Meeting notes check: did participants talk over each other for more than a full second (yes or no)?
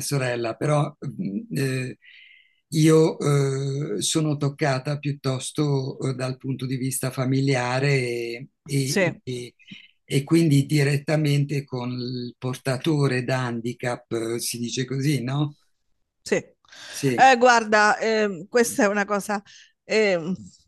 no